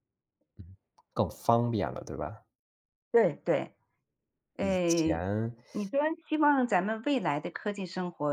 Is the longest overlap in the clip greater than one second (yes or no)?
no